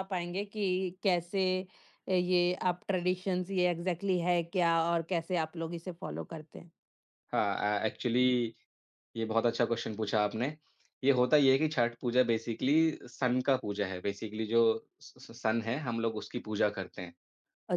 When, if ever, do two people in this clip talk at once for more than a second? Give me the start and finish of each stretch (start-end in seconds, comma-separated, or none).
none